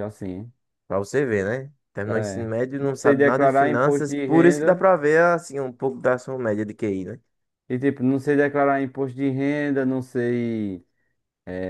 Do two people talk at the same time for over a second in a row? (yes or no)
yes